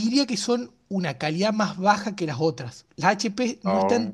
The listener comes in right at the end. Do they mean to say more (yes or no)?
no